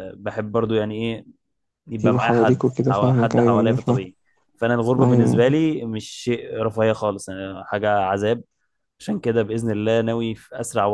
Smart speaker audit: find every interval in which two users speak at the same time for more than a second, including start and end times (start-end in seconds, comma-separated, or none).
2.0-4.0